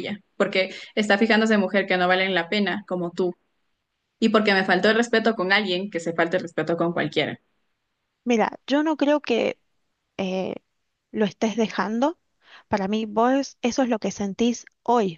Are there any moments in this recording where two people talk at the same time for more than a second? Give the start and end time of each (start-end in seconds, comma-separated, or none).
none